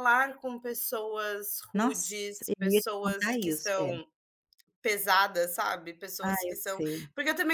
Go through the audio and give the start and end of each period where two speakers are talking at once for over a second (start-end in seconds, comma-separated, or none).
1.7-3.9